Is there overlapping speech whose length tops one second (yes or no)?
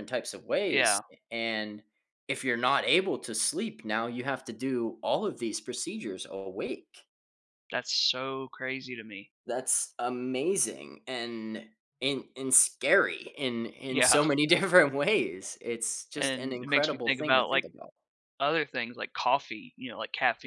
yes